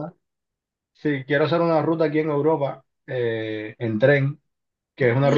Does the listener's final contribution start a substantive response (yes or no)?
no